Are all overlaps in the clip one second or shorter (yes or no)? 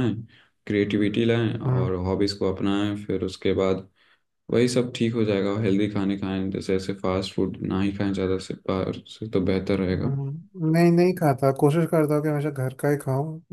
yes